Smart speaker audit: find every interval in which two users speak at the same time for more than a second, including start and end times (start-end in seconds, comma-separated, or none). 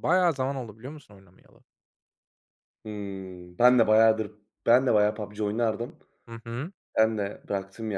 none